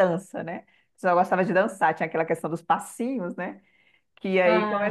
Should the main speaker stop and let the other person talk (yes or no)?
no